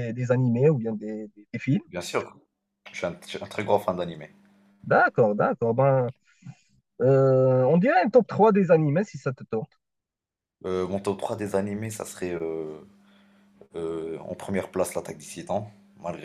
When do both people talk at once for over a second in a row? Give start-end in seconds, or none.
none